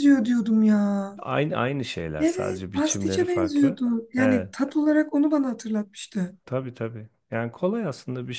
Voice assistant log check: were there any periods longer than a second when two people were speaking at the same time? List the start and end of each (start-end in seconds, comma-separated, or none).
2.2-4.5